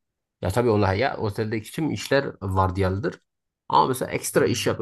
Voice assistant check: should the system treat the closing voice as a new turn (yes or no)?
no